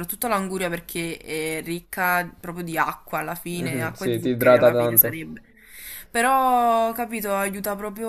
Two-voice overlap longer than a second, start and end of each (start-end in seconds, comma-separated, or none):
3.5-5.2